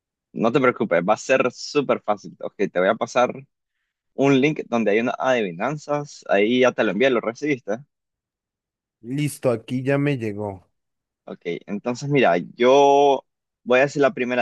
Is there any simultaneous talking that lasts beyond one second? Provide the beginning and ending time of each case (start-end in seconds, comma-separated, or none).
none